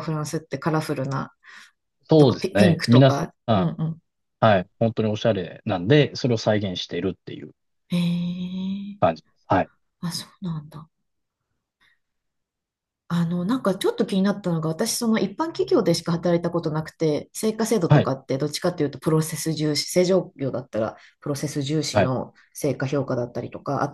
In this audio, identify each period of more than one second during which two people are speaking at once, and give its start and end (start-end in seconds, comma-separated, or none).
2.2-3.7